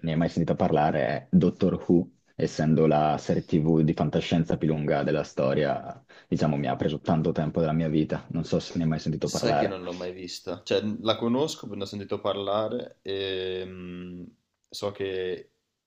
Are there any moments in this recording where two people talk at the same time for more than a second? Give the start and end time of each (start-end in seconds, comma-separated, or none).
none